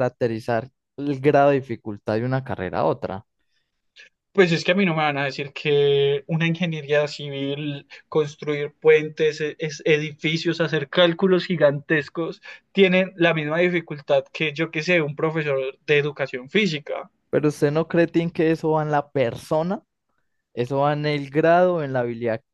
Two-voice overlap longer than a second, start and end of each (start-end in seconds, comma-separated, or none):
none